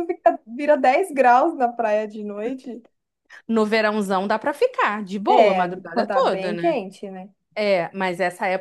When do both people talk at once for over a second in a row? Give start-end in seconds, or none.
5.3-6.8